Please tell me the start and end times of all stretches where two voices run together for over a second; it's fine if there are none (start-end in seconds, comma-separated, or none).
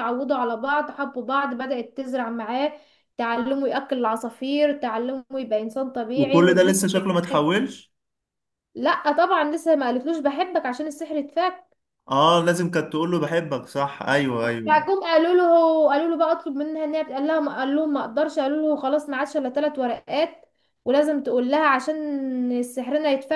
6.2-7.6